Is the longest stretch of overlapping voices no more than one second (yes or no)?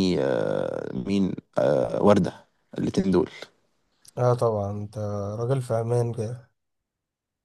yes